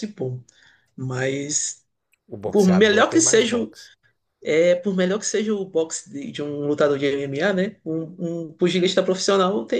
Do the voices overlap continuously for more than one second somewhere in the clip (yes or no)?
yes